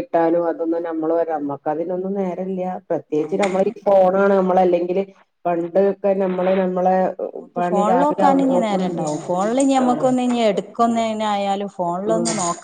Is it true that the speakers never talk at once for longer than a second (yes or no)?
no